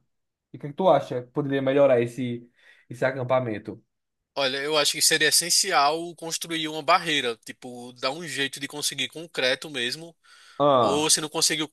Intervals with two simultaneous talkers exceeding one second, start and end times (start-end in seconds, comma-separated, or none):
none